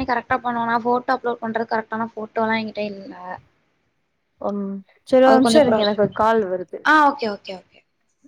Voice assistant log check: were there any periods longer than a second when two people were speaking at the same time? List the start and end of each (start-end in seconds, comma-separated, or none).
none